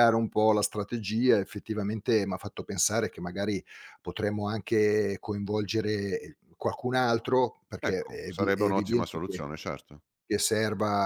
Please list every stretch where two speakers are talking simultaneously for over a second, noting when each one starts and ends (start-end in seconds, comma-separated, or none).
7.8-9.4